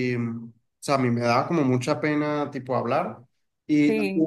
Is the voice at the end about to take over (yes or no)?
no